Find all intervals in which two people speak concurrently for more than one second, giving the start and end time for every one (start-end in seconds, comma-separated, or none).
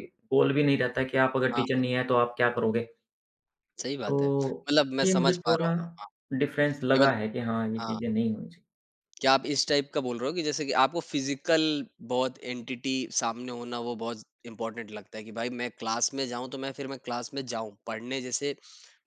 4.1-5.7